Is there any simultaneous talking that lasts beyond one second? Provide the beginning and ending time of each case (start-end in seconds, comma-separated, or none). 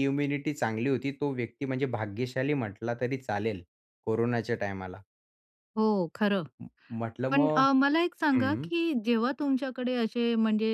none